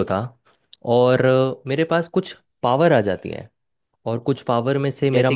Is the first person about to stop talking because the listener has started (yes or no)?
no